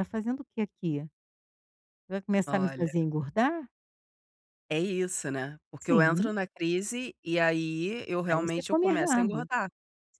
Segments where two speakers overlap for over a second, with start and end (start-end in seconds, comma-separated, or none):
8.3-9.5